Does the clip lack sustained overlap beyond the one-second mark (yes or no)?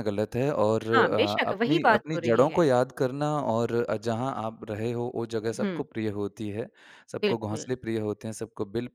no